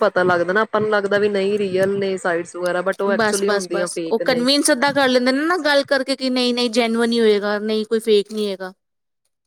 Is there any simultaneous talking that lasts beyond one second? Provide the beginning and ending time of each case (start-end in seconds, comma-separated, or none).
none